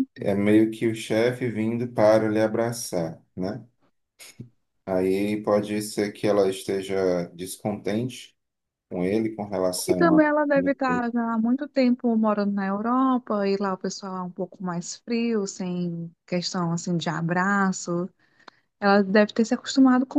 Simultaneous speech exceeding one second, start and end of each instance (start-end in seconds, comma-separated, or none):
none